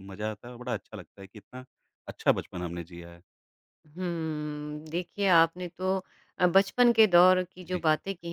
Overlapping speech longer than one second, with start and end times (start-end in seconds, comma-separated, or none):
none